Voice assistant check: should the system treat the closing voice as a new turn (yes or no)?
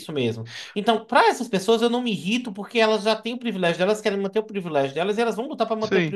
yes